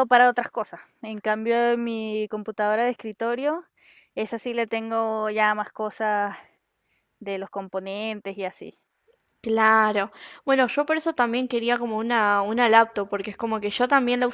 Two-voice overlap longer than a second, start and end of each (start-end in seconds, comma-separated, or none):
none